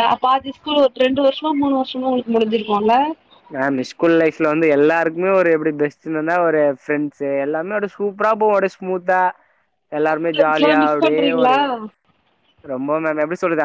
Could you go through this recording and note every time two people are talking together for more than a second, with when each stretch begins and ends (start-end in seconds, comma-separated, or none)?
10.0-11.6